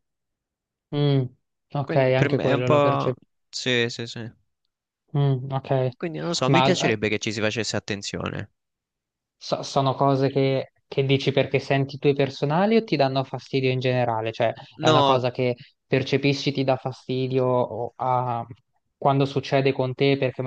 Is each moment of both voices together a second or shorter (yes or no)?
no